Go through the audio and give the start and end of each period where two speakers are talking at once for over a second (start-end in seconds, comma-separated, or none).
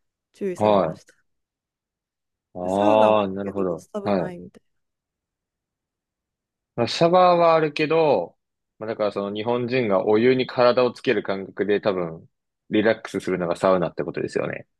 2.6-4.4